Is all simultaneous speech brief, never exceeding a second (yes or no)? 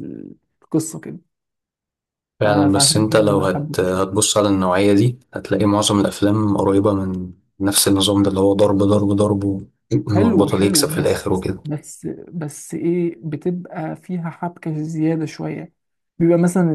no